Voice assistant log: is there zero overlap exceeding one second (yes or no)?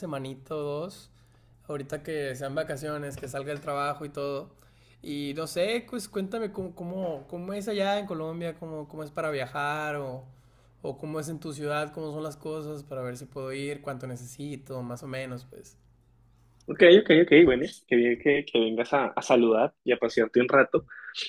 yes